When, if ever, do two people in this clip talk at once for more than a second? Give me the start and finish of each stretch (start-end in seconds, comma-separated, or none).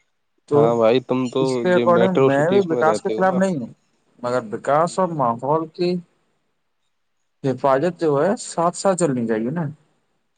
1.4-3.4